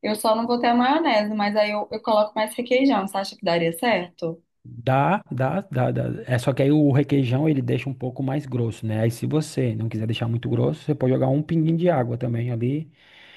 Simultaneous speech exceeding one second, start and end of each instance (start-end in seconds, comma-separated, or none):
none